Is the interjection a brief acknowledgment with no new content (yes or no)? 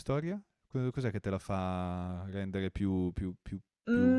no